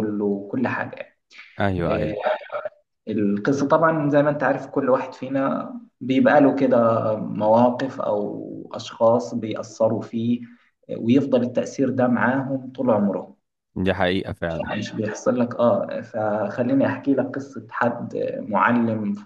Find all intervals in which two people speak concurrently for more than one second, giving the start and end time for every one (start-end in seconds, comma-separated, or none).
none